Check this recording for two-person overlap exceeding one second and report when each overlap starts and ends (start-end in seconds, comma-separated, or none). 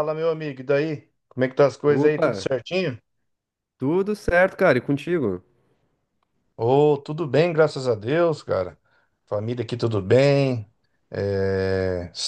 none